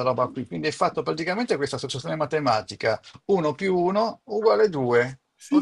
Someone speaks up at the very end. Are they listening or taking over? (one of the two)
taking over